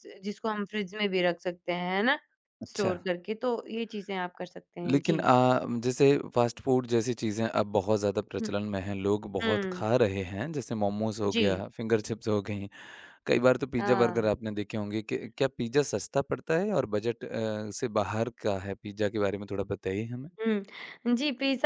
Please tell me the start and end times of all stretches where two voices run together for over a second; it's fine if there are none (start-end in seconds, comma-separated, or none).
none